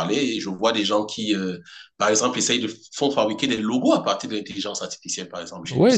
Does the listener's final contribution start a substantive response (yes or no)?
yes